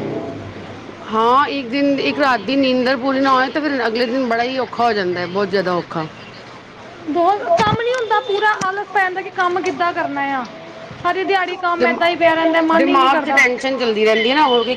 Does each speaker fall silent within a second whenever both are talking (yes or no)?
no